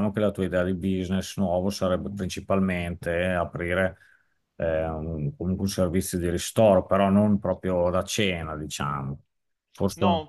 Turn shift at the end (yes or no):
yes